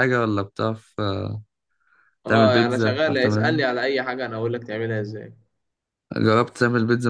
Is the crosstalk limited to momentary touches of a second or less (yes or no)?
no